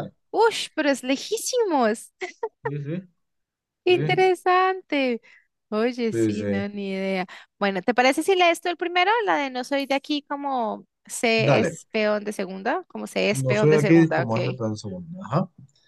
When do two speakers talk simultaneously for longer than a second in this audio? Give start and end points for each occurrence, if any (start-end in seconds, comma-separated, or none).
13.3-14.6